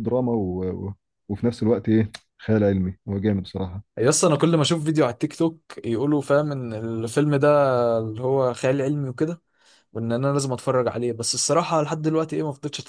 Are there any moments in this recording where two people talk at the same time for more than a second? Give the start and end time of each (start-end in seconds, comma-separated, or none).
none